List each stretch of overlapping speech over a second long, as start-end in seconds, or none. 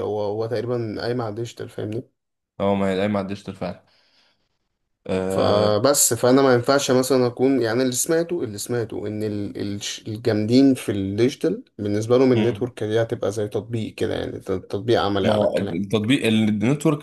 none